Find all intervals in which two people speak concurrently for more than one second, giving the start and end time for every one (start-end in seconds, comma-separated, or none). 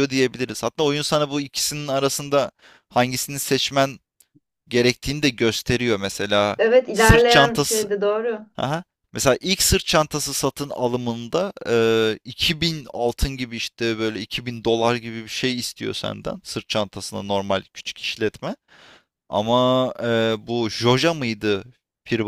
6.6-7.9